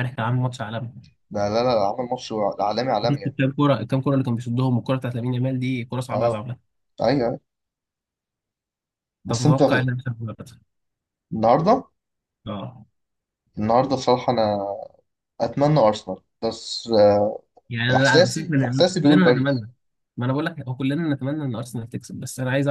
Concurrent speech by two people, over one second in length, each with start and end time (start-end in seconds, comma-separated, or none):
17.9-19.6